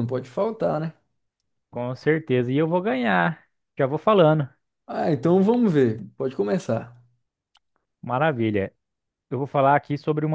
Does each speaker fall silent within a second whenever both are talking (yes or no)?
yes